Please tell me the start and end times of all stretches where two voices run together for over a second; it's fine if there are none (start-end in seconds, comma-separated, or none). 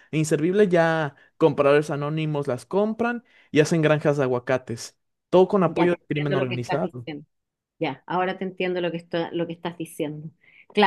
5.7-7.1